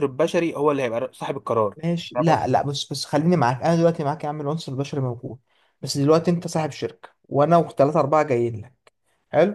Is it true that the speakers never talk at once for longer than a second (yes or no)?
yes